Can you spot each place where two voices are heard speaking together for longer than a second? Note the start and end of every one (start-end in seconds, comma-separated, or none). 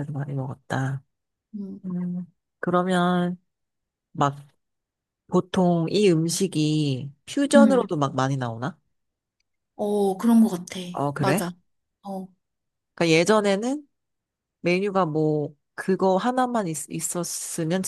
none